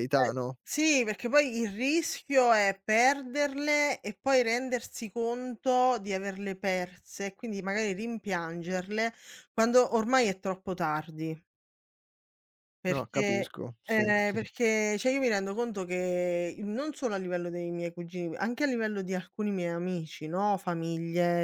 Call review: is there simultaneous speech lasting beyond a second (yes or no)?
yes